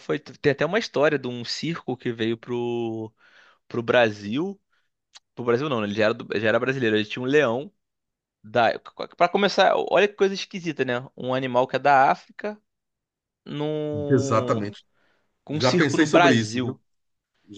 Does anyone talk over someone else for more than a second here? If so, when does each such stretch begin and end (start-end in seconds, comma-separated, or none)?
15.5-16.8